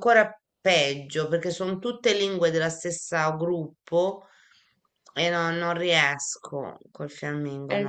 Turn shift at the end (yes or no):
yes